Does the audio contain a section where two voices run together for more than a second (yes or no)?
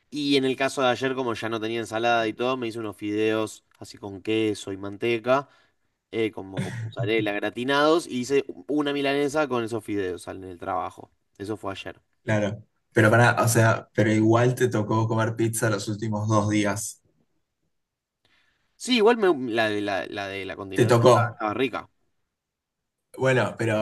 no